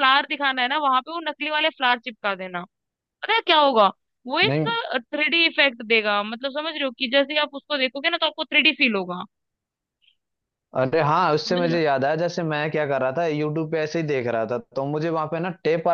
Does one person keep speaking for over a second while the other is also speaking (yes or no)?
no